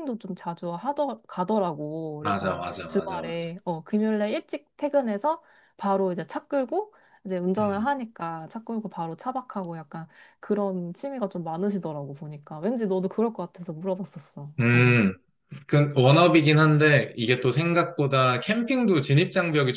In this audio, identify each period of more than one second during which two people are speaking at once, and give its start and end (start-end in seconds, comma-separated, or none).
2.2-3.5